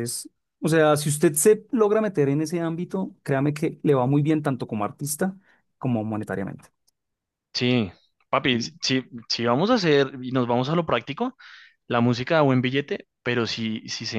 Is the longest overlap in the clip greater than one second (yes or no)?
no